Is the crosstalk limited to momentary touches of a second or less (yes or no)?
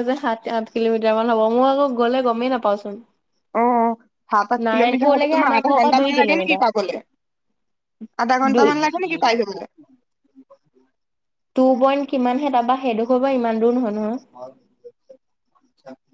no